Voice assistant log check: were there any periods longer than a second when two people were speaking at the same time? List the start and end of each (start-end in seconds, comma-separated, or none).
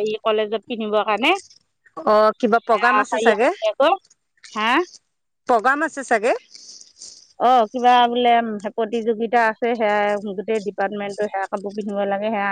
none